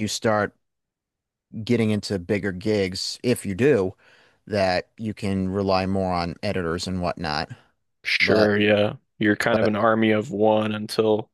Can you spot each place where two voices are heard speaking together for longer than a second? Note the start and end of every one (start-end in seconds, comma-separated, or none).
none